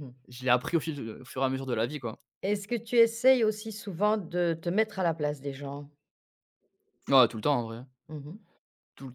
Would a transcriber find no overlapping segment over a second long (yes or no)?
yes